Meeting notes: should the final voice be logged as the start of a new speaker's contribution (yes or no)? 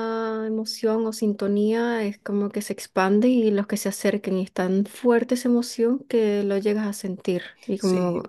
yes